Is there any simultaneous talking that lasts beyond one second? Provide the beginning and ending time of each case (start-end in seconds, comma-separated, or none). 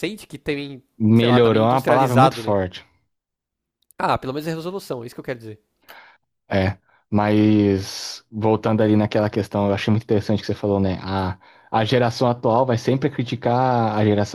1.0-2.6